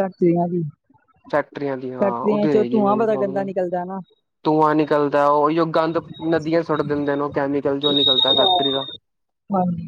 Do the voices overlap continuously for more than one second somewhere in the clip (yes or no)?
yes